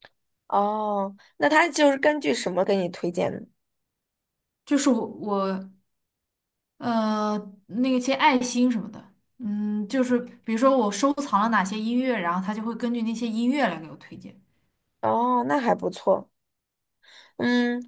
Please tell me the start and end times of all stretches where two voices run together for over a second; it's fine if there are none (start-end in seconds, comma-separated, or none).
none